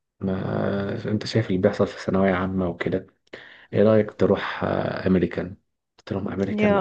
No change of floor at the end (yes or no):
yes